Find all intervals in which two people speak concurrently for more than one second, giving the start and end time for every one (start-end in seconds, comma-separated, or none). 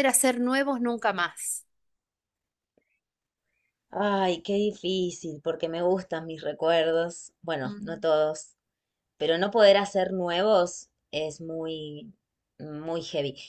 none